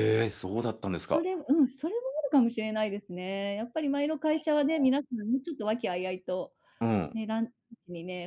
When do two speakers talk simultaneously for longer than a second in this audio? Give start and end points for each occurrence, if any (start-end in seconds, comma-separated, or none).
none